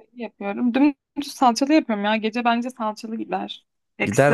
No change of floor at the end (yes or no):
yes